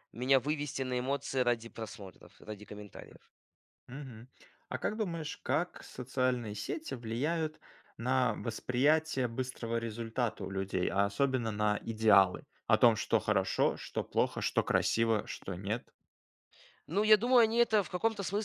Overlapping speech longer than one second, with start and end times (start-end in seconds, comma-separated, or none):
none